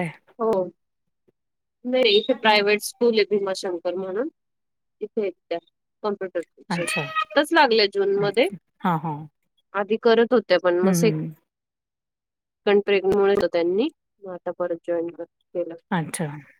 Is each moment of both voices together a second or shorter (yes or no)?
yes